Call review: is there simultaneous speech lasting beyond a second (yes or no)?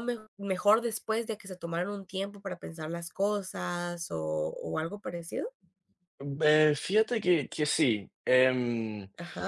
no